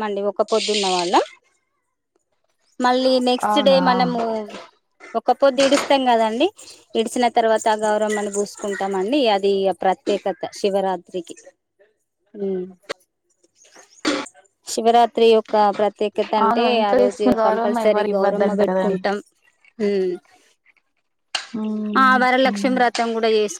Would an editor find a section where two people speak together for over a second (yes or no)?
yes